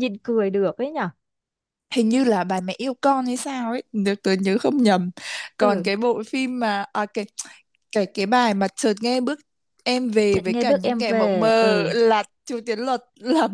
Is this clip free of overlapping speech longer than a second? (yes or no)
no